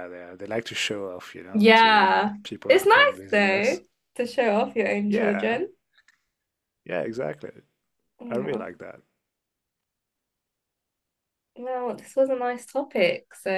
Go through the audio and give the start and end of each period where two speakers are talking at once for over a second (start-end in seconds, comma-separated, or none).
1.5-3.8